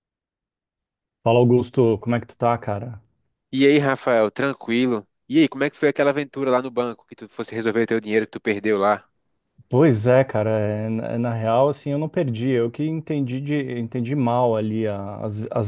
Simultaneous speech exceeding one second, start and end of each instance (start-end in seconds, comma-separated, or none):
none